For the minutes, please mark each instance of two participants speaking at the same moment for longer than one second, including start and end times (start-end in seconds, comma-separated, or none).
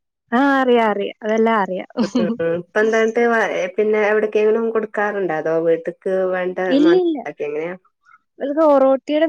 none